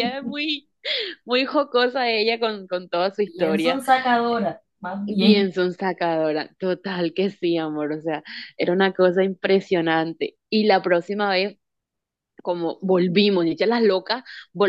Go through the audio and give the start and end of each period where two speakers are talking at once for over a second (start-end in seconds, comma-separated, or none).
none